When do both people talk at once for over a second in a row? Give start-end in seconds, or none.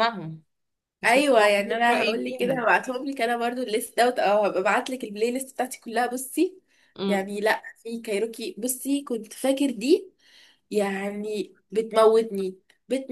1.0-2.6